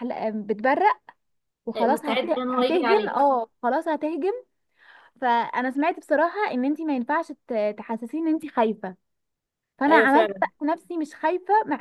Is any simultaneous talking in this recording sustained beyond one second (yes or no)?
yes